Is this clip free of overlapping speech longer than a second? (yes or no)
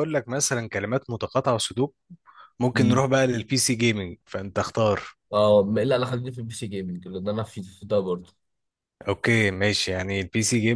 yes